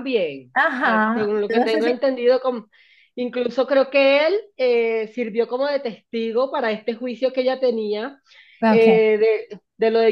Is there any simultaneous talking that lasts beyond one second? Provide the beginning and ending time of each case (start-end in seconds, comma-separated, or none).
0.5-1.9